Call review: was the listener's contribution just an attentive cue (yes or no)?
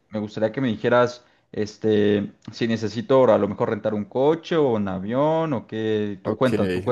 no